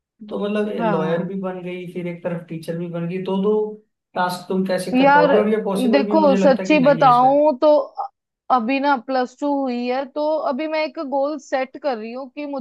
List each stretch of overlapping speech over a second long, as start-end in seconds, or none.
5.9-7.4